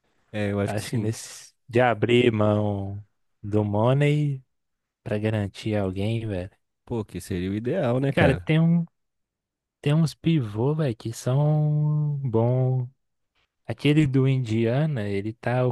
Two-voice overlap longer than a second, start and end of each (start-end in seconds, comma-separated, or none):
none